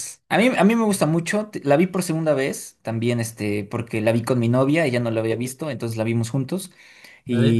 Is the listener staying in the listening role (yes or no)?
yes